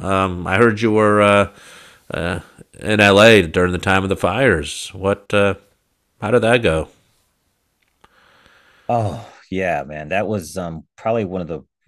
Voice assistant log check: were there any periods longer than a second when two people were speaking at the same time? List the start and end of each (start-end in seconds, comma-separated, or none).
none